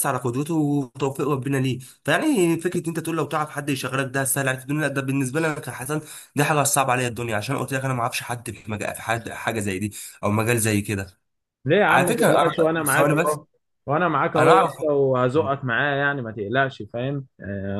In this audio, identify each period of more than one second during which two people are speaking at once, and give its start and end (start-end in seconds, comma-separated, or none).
11.9-13.4